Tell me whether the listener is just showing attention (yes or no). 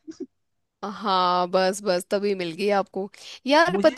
yes